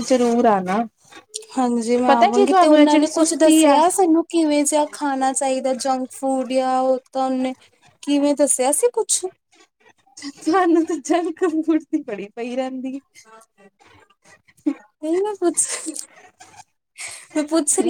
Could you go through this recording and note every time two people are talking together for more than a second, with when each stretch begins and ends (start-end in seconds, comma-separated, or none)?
2.1-3.8